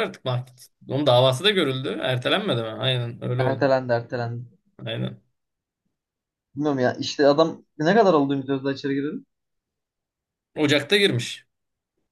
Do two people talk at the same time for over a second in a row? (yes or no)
no